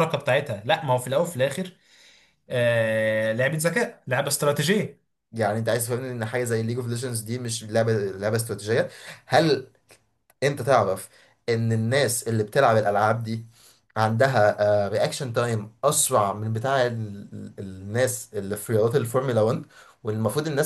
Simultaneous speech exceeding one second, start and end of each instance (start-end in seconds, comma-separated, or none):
none